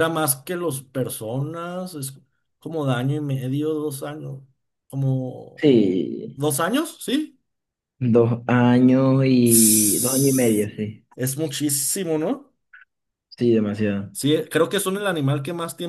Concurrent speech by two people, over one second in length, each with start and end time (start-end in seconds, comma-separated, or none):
9.4-10.7